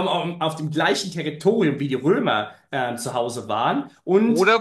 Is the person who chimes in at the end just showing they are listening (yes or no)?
no